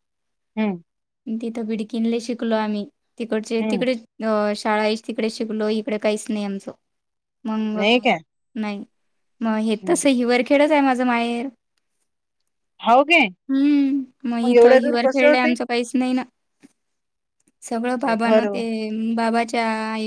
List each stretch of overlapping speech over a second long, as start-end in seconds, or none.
13.5-15.5